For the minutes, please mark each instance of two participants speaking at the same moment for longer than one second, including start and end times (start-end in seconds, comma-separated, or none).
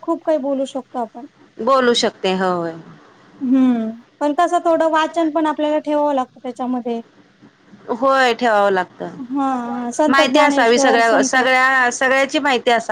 9.2-11.4